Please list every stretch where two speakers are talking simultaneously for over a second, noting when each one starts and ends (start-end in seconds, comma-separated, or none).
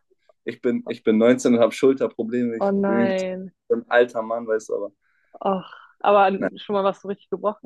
none